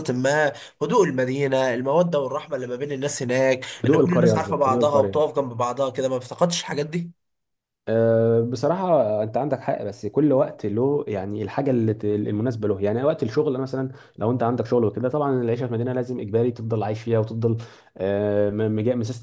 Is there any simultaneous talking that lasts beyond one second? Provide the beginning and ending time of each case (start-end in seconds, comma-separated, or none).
3.8-5.2